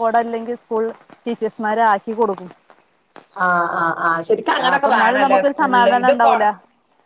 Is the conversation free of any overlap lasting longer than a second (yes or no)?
no